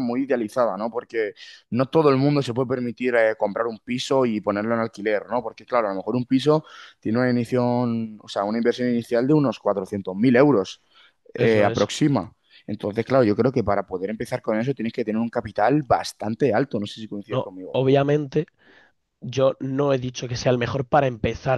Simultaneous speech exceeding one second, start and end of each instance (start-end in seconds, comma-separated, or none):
none